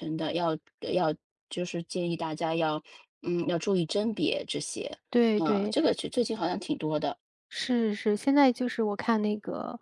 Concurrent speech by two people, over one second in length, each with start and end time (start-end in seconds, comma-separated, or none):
none